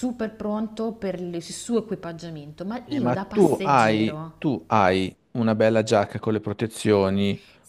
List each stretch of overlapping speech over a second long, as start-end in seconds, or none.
2.9-4.3